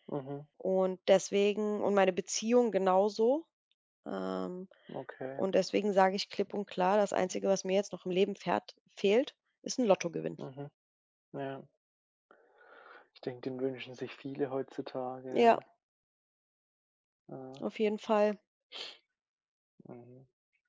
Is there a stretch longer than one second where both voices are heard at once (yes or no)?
no